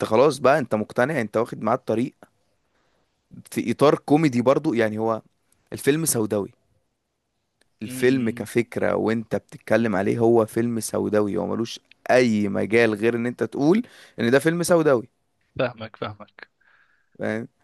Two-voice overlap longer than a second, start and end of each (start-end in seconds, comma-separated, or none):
none